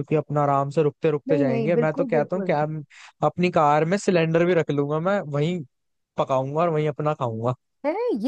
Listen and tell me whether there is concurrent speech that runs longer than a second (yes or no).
yes